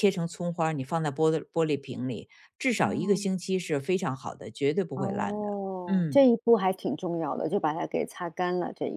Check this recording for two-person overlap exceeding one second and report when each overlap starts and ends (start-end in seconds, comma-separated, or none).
4.9-6.2